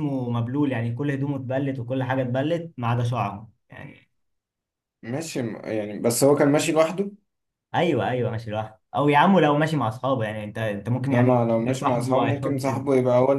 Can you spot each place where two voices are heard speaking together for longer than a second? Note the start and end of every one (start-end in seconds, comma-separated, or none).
11.1-12.6